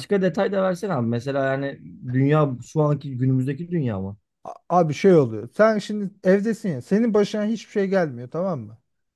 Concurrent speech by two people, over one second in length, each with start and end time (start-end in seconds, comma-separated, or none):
none